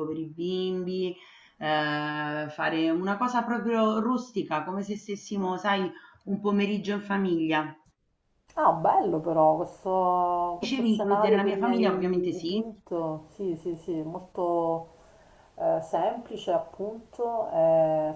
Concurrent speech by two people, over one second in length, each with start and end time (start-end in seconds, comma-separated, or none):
10.6-12.6